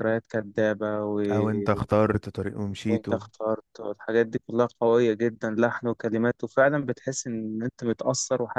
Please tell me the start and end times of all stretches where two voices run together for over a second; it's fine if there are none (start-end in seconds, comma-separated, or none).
none